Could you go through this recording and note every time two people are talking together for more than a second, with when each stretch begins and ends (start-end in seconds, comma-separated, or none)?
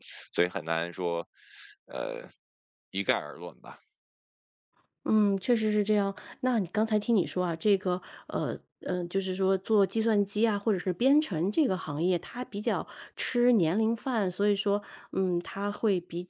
none